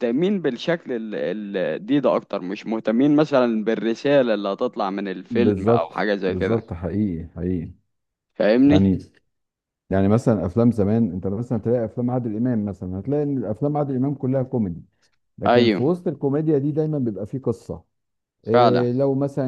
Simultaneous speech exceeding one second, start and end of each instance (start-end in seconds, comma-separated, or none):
5.3-6.6